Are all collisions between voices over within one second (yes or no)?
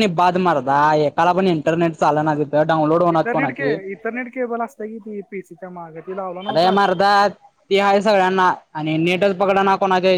yes